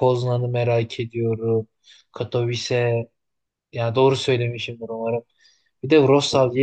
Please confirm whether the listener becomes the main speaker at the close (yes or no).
no